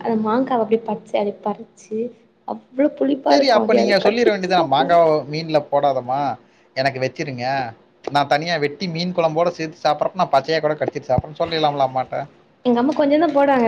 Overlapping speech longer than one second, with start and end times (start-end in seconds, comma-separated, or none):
3.3-4.9